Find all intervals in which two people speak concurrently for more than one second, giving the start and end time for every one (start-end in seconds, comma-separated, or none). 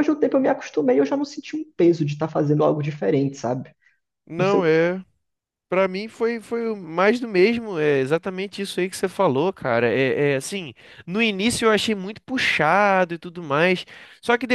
none